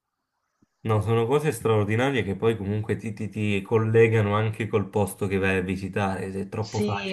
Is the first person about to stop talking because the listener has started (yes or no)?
yes